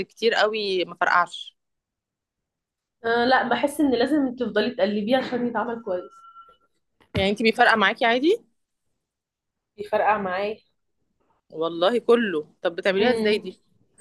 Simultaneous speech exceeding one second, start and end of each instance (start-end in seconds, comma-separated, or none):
none